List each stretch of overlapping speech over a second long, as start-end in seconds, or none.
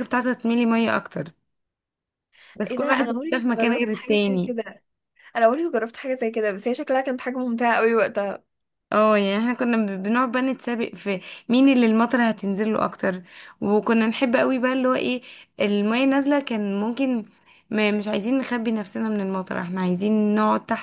2.7-4.5